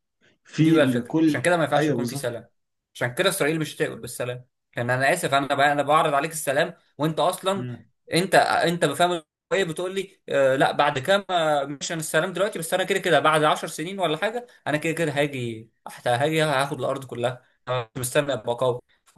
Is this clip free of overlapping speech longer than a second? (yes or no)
no